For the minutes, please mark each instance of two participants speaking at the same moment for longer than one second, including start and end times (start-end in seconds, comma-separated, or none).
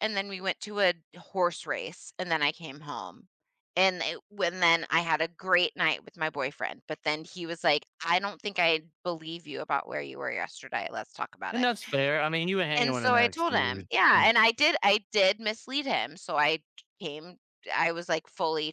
12.8-14.3